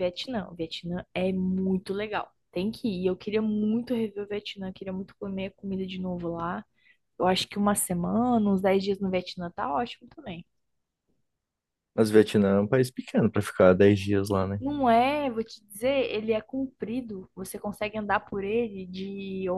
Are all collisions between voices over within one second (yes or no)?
yes